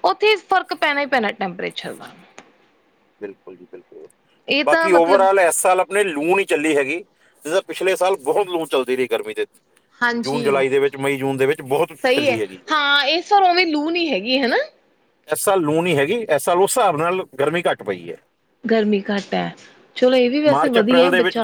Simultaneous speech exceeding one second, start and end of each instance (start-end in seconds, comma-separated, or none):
none